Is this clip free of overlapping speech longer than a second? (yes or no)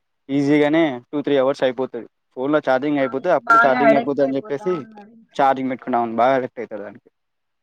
no